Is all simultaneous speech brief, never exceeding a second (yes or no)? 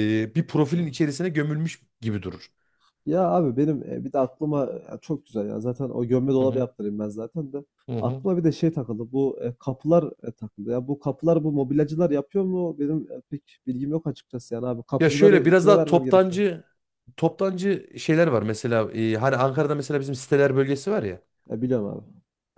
no